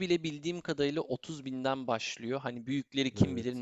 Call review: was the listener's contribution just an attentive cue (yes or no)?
yes